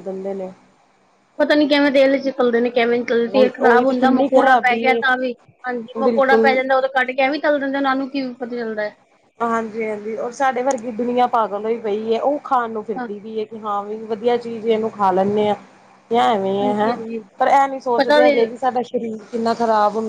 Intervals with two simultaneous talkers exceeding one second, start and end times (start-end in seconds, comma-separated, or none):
3.3-5.0